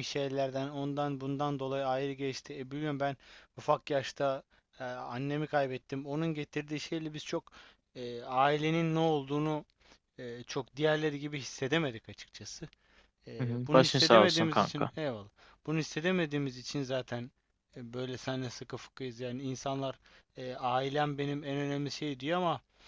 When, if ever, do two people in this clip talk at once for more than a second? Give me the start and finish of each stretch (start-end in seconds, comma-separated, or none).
13.4-14.9